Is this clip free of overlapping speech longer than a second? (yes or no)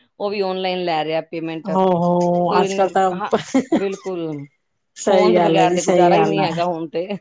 no